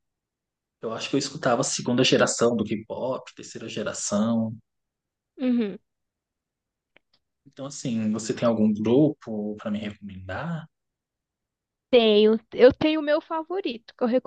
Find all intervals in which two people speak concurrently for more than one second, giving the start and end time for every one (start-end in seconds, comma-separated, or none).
none